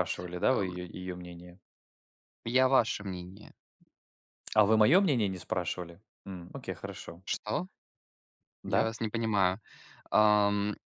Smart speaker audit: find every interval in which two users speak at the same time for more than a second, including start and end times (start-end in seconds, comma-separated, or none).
none